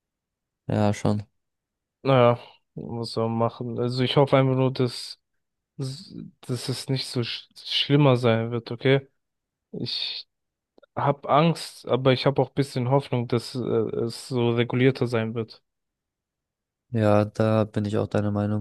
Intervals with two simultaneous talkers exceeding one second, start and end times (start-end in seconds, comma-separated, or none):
none